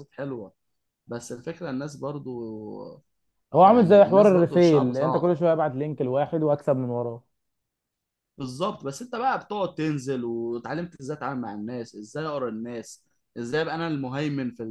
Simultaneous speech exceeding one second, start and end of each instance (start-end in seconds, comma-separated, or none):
3.6-5.3